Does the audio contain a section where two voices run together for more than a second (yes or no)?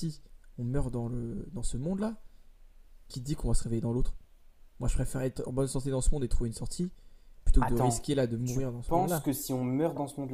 yes